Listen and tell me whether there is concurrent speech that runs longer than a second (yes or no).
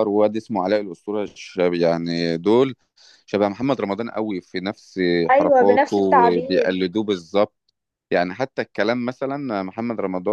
yes